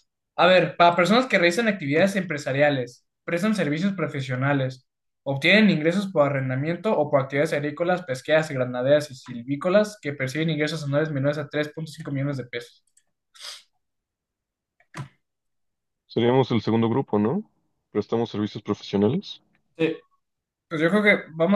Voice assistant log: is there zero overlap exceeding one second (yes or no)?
yes